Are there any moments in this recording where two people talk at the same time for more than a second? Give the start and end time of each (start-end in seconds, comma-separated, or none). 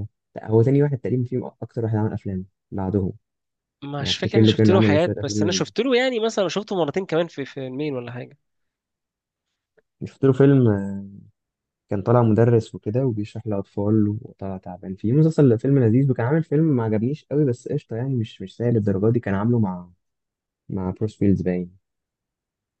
4.0-5.7